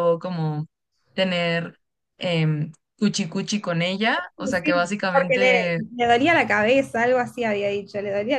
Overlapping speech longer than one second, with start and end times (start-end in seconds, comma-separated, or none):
4.4-5.8